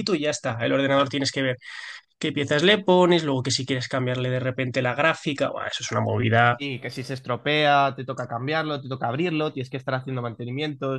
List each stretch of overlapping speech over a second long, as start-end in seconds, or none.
none